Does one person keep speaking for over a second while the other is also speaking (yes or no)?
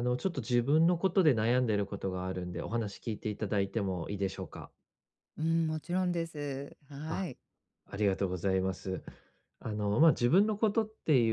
no